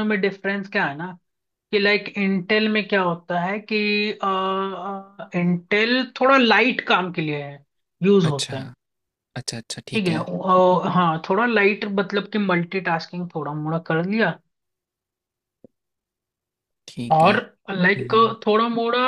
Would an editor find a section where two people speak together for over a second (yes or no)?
no